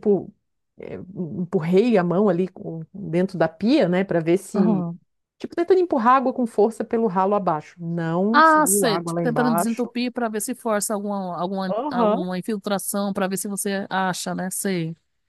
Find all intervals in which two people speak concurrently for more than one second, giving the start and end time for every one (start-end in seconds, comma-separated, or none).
8.3-9.9